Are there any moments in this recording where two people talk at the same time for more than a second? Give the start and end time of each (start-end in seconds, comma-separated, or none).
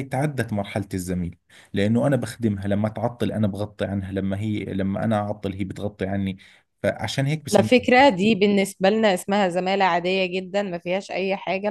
none